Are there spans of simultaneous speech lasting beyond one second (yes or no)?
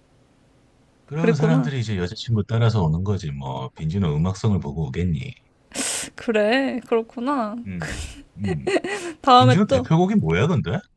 no